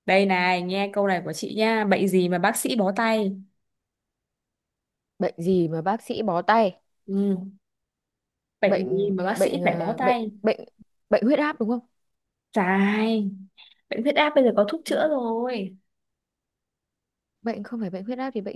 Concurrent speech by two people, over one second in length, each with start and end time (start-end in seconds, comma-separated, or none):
8.6-10.3